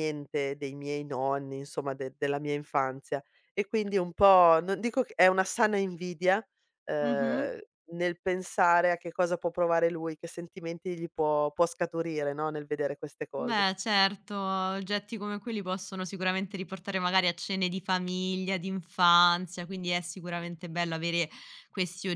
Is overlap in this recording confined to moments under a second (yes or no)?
yes